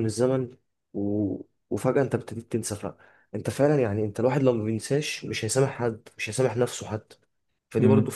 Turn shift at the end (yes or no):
no